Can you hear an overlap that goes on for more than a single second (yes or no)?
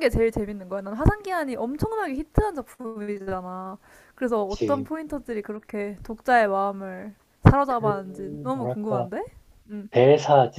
yes